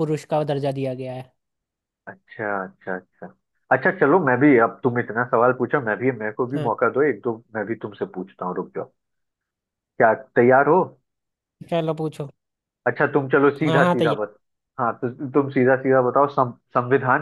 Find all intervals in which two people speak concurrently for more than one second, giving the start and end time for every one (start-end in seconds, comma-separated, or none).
none